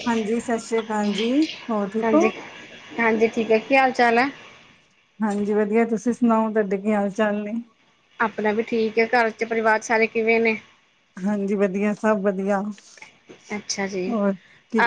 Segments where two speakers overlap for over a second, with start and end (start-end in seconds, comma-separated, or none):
none